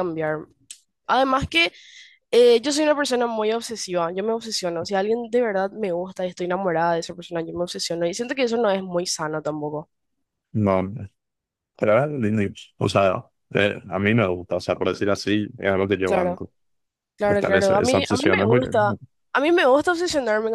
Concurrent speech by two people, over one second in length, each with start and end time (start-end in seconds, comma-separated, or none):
17.3-18.9